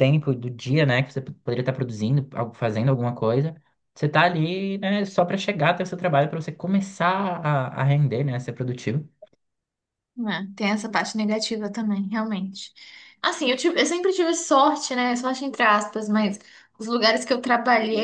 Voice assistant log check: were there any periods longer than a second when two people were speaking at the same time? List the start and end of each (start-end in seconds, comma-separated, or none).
none